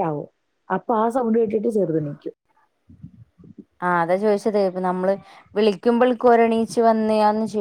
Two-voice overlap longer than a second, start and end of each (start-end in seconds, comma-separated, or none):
none